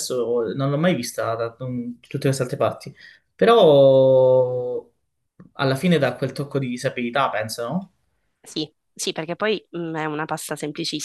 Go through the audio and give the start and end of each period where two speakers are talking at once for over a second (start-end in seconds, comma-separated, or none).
none